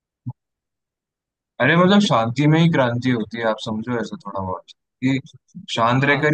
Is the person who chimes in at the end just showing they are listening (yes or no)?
yes